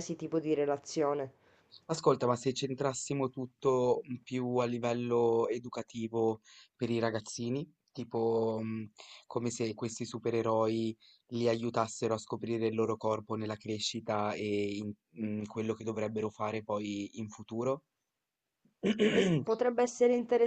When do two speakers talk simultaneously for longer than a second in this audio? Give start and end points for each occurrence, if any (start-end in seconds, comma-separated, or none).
none